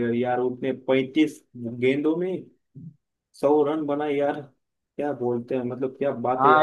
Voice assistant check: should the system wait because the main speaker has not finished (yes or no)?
no